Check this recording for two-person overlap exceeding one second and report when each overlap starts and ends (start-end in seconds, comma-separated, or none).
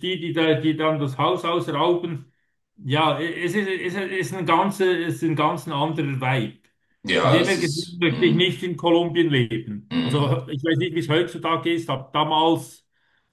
7.2-8.4